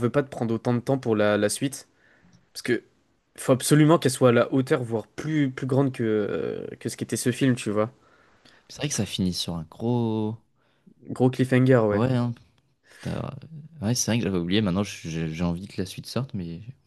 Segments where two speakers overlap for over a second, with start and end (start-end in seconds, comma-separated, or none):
none